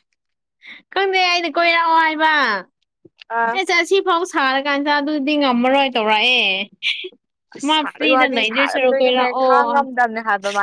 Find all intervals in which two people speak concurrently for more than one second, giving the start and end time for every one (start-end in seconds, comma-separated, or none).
7.7-9.5